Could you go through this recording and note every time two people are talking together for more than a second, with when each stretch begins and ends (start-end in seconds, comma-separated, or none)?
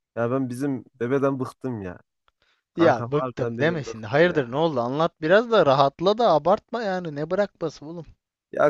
2.8-4.5